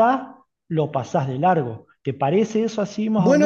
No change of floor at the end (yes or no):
no